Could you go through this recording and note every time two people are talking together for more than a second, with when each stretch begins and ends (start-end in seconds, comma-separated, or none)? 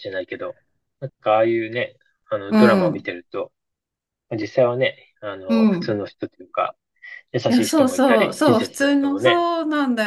7.5-9.4